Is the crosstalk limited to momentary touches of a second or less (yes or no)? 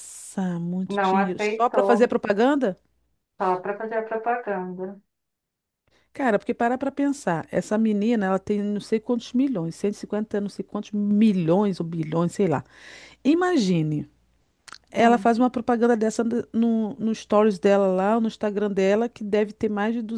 no